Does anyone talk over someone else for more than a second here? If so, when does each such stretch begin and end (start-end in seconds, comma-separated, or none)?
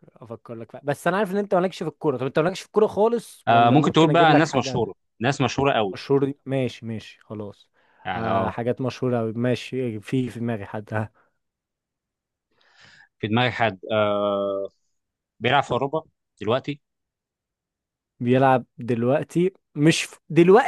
3.5-4.8